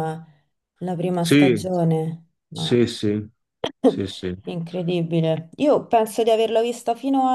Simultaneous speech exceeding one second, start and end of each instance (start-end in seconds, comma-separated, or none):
none